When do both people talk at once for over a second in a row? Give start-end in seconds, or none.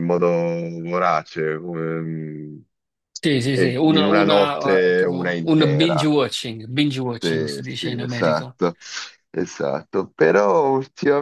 3.5-6.1, 7.2-8.6